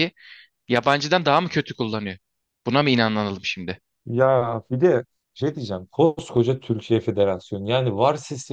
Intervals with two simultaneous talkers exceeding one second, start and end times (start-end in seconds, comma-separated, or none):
none